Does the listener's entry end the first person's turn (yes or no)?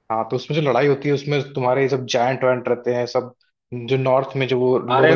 yes